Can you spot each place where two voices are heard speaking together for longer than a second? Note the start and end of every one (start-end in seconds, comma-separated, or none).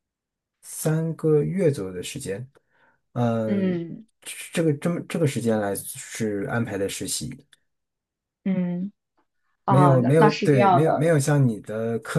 9.7-11.1